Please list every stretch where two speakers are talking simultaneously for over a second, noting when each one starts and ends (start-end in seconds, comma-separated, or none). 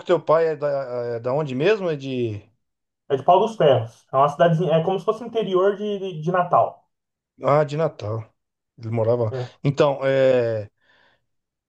none